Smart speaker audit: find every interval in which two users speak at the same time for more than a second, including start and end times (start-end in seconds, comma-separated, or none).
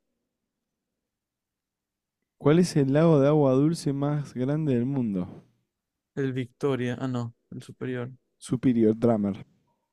none